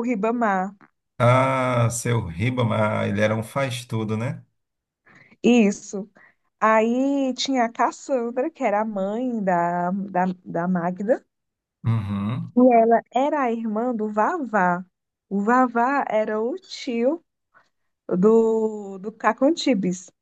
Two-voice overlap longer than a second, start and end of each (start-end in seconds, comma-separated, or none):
none